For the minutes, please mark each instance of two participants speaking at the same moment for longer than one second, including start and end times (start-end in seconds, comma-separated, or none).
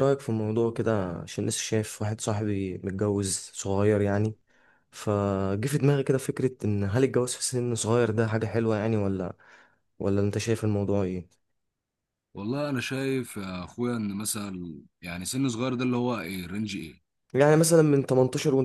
none